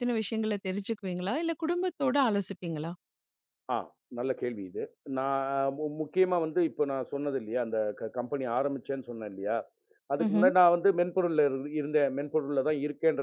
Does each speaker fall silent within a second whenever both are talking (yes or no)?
yes